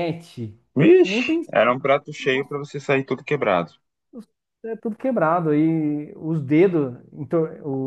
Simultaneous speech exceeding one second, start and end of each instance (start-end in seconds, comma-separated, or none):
1.0-2.6